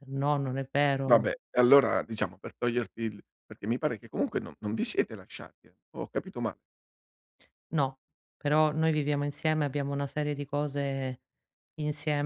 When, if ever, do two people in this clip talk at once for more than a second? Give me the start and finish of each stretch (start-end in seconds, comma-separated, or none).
none